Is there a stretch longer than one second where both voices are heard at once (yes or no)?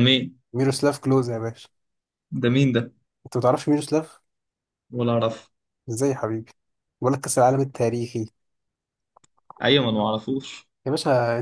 no